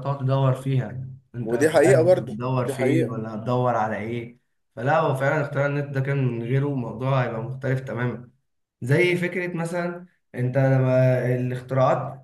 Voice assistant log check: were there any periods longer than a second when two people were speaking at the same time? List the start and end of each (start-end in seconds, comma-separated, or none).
1.4-3.2